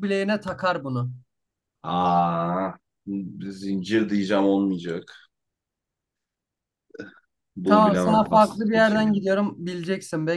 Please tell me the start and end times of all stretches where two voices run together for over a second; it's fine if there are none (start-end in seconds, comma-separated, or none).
7.6-9.3